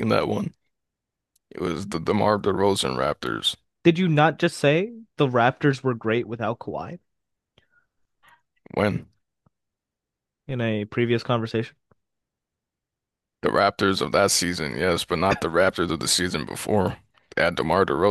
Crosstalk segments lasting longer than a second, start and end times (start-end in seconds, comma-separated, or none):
none